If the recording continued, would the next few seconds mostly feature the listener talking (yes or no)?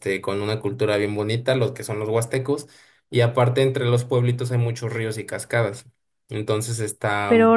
yes